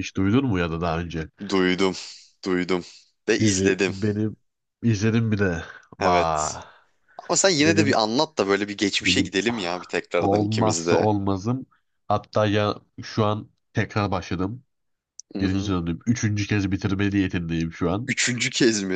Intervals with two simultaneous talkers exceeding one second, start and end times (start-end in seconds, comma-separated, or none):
9.0-11.1